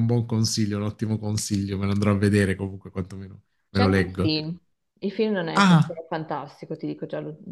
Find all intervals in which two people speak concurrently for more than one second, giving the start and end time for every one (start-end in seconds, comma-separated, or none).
none